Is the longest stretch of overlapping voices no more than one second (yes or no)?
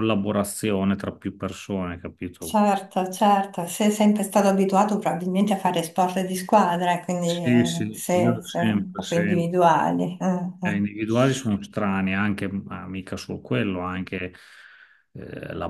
no